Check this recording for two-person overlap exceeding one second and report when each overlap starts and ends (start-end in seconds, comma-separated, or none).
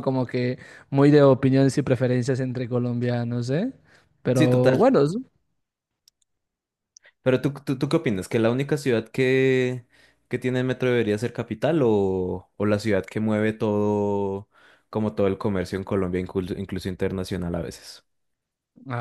none